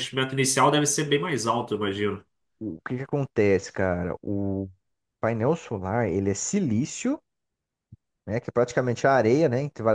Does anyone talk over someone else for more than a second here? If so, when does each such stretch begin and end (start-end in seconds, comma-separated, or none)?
none